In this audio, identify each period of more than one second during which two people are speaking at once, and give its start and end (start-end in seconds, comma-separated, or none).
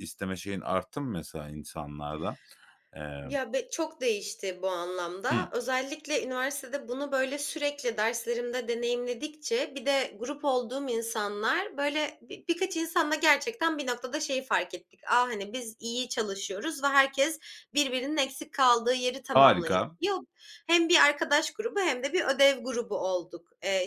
none